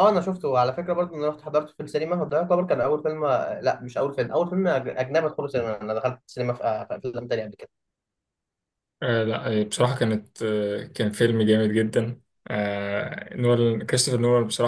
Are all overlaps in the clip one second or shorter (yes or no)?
yes